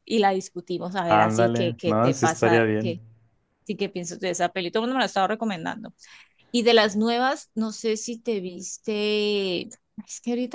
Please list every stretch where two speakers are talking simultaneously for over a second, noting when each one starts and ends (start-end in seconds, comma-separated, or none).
1.1-3.0